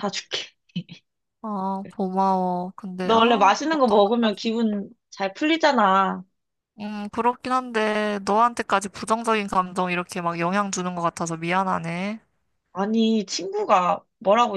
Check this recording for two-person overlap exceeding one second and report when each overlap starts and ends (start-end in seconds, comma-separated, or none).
3.0-4.4